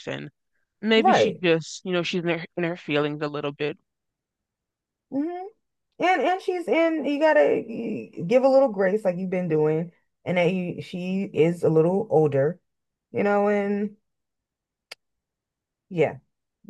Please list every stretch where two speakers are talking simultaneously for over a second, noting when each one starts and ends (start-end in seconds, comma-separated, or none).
none